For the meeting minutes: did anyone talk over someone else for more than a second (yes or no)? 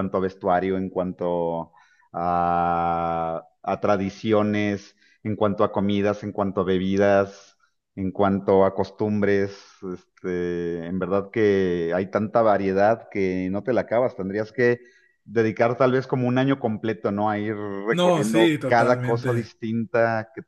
yes